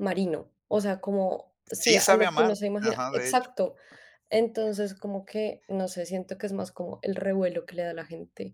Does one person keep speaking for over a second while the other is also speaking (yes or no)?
yes